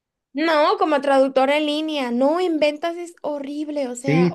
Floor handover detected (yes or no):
yes